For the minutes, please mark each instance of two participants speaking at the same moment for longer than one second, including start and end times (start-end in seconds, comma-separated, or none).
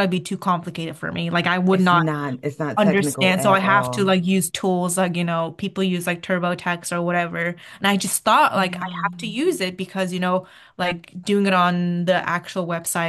2.8-4.2